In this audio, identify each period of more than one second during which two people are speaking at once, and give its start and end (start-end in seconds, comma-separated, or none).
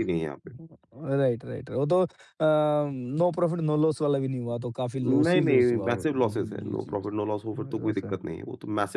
5.0-8.2